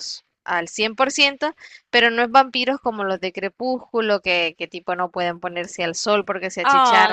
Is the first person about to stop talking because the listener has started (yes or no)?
yes